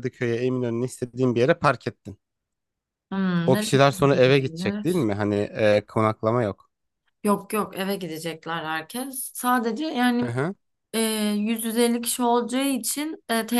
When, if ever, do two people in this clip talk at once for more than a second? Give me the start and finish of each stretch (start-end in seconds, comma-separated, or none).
3.5-5.1